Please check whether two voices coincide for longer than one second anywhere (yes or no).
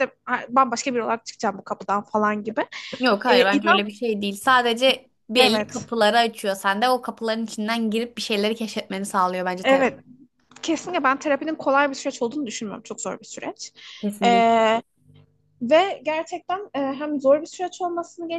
no